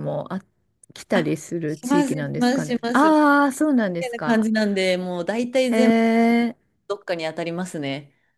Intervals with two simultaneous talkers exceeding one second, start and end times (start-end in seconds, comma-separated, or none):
1.1-3.1